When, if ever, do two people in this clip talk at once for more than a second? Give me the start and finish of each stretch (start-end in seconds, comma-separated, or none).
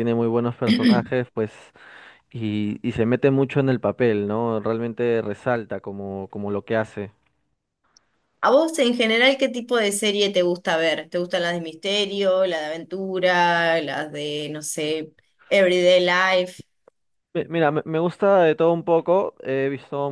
none